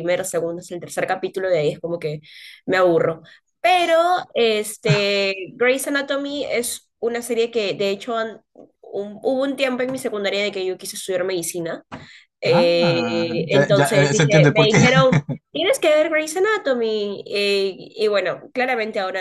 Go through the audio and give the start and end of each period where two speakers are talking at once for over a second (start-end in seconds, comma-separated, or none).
12.5-14.8